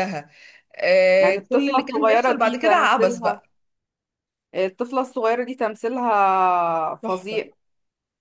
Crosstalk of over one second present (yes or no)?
yes